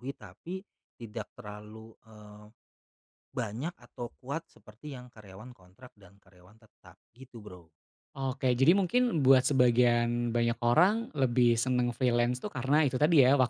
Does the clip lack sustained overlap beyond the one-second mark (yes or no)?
yes